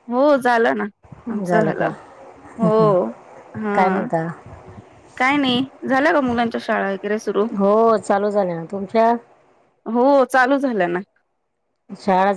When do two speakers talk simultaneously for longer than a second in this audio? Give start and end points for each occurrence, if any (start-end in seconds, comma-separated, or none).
none